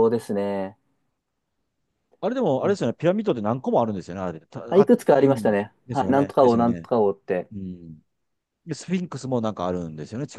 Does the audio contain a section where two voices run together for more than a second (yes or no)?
yes